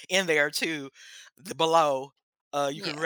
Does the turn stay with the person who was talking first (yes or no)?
yes